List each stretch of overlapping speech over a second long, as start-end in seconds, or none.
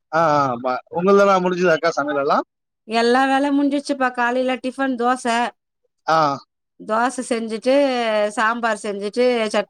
none